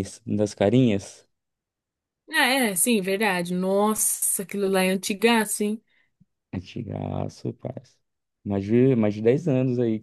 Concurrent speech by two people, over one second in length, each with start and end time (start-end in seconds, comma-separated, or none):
none